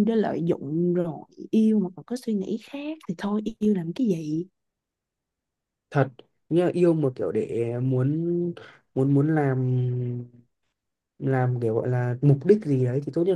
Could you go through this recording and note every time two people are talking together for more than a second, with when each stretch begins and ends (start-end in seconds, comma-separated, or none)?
none